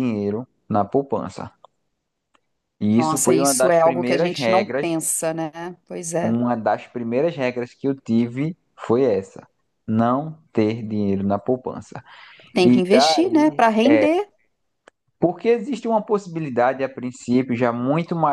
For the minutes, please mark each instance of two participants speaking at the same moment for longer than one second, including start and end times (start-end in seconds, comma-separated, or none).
3.0-4.9, 12.6-14.2